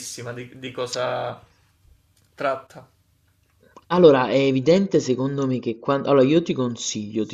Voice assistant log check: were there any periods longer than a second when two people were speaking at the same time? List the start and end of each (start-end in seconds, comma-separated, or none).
none